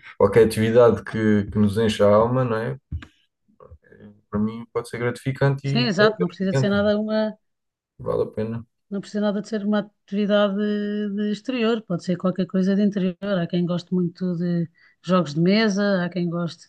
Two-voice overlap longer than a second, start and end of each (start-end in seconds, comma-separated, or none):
5.7-6.9